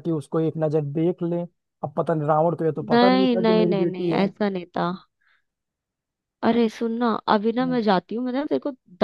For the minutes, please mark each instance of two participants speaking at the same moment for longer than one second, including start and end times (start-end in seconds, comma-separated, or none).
2.9-4.3